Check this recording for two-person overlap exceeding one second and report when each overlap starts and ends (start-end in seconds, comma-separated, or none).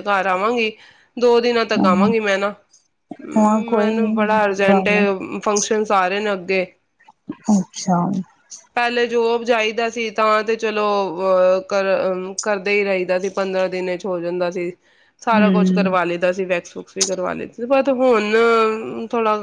3.8-5.0